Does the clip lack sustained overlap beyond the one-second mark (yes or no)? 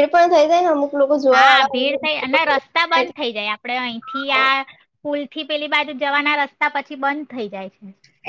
no